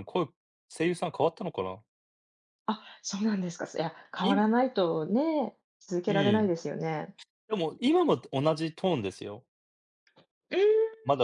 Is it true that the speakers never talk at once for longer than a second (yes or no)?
yes